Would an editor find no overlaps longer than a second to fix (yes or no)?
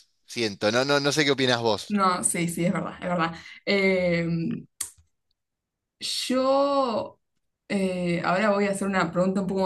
yes